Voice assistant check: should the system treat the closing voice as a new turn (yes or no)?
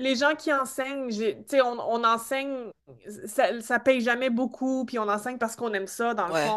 no